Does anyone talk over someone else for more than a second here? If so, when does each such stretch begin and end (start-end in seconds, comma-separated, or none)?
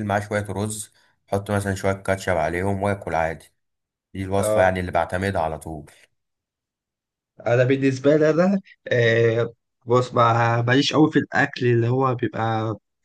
none